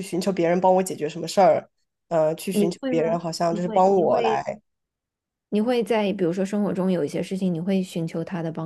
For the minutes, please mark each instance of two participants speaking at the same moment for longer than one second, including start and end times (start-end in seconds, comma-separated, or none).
2.5-4.4